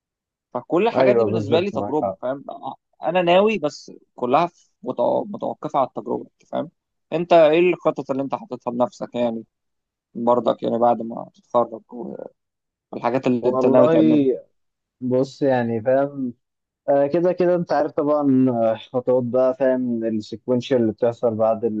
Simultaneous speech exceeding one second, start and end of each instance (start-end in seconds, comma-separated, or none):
0.9-2.2